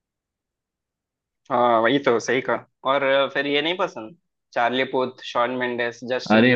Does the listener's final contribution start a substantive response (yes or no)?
yes